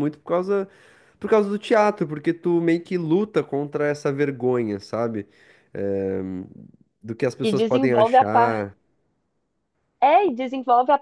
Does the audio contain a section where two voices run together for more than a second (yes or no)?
yes